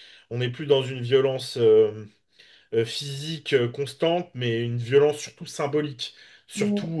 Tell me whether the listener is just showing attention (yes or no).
yes